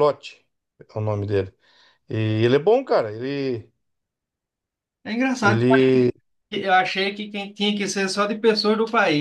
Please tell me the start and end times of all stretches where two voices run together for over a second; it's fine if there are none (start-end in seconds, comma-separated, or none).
none